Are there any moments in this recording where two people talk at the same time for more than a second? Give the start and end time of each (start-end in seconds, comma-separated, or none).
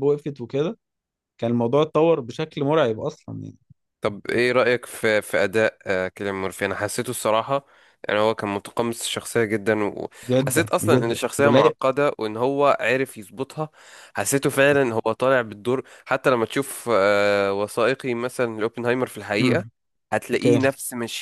10.3-11.7